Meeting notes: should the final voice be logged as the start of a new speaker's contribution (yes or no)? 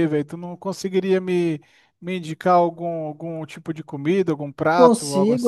yes